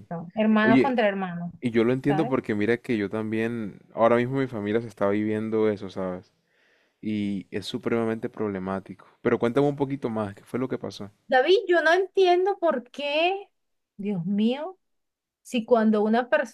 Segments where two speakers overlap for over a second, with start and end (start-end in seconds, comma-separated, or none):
none